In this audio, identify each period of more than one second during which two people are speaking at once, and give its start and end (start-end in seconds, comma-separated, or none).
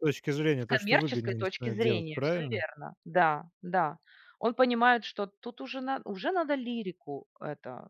0.6-2.6